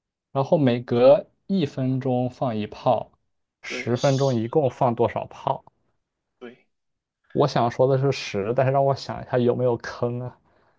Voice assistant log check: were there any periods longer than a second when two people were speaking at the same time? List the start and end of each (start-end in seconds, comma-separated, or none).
3.7-4.9